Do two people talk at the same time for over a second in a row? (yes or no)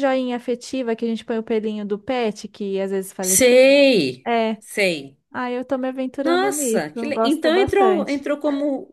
yes